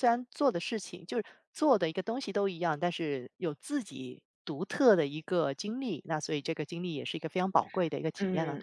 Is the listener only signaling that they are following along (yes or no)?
no